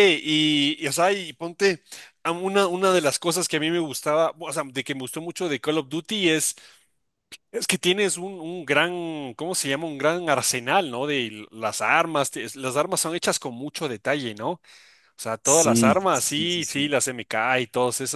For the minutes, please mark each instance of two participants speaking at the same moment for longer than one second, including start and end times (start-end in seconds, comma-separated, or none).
15.4-16.9